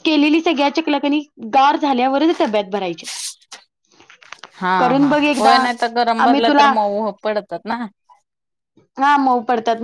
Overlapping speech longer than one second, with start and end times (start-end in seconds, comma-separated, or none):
none